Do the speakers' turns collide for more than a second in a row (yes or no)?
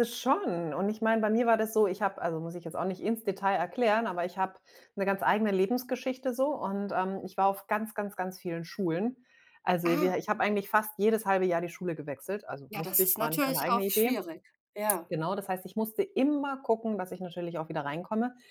yes